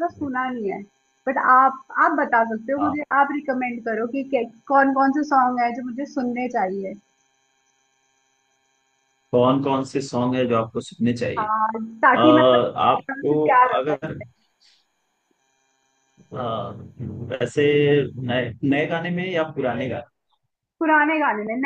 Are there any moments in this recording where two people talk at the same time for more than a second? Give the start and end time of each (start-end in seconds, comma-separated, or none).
12.1-14.2